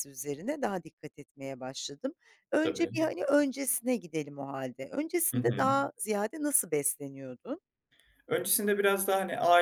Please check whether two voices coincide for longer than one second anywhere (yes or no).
no